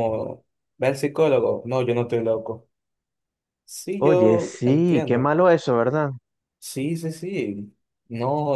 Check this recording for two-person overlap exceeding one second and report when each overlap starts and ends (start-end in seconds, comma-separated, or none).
4.0-5.3